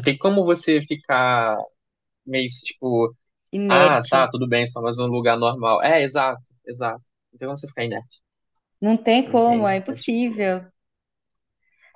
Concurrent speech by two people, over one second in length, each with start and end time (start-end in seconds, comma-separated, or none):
9.3-10.5